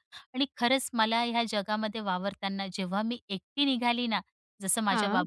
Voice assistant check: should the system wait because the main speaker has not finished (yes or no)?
yes